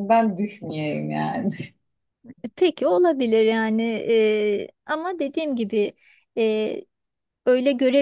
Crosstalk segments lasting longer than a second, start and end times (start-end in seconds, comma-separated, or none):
none